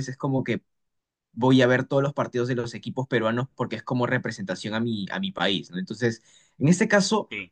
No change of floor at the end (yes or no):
yes